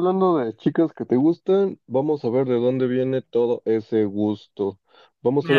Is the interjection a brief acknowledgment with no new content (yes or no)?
yes